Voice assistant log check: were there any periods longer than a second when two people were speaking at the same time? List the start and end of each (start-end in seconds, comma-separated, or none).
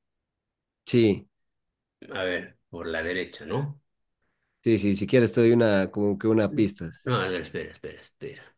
none